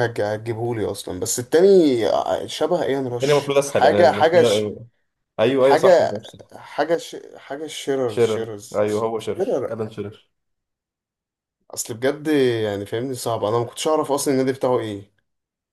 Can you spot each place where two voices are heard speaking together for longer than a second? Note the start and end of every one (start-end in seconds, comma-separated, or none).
3.1-4.7, 8.1-9.8